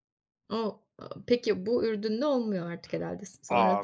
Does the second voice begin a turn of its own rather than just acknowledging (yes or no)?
yes